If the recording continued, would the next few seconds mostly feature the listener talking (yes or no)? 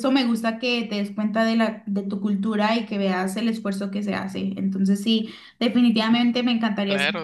yes